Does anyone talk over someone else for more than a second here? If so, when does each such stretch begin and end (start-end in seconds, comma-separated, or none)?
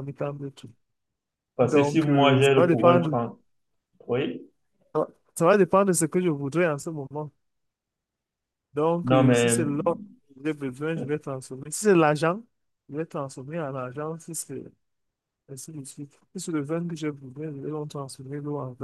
1.6-3.1